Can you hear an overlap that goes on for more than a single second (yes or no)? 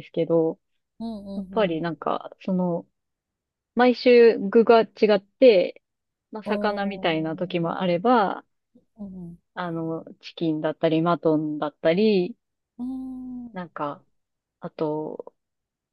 yes